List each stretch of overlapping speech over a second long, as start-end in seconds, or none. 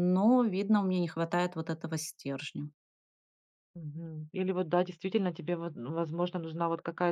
none